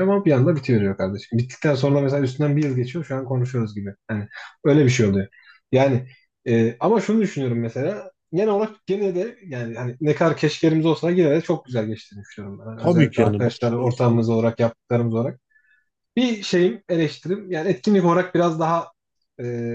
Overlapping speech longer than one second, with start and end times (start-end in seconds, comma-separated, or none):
12.8-14.3